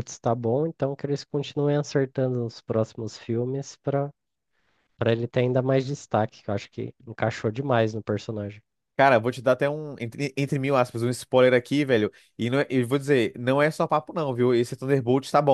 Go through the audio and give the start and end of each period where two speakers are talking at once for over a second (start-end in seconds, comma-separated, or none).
none